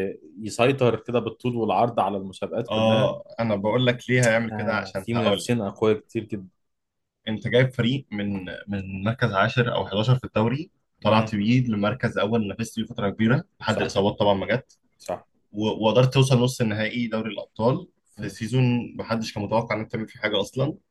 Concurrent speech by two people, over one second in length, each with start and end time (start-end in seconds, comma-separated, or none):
4.5-5.7